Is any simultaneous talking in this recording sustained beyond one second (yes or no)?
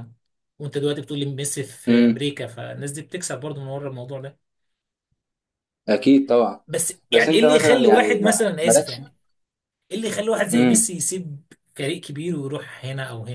yes